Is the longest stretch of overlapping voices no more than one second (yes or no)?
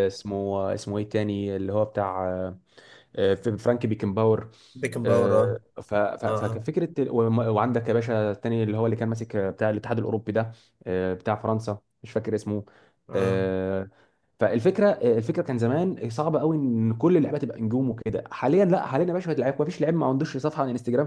yes